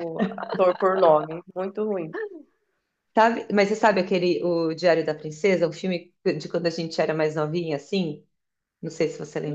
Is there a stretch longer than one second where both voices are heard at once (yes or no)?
no